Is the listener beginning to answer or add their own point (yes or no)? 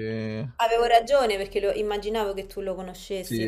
yes